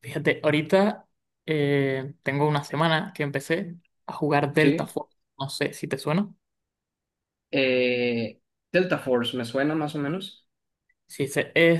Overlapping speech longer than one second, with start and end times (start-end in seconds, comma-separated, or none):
none